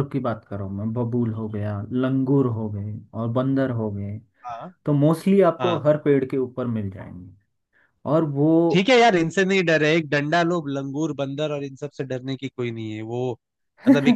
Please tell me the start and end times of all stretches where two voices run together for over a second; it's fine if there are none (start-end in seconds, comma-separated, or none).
none